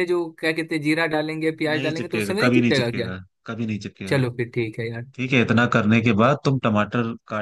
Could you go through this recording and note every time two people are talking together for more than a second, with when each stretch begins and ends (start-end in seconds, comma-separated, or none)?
1.7-3.1